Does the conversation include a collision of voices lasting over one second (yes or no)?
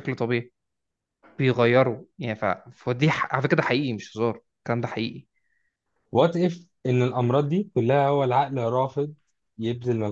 no